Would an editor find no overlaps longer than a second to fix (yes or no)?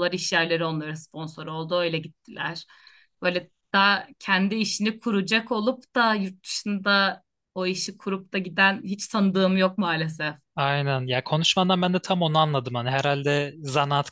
yes